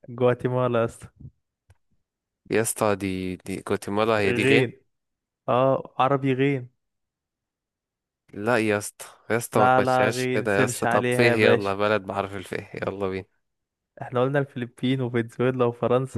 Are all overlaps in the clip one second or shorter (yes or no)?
no